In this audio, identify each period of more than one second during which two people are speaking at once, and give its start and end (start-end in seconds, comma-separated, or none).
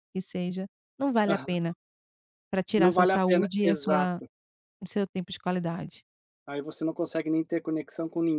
2.8-4.2